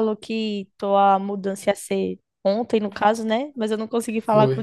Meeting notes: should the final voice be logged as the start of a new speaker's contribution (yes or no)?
no